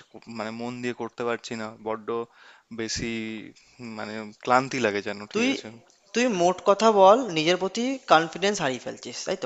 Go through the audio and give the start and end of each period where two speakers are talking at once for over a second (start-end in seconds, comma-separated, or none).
none